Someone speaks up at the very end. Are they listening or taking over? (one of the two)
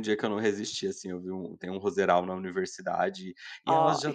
listening